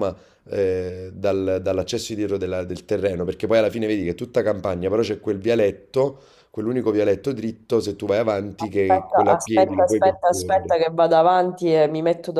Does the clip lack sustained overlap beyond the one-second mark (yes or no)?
no